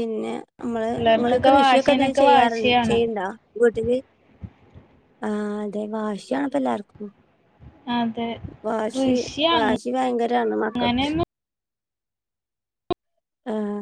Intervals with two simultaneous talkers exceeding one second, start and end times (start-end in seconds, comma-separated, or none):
0.9-3.0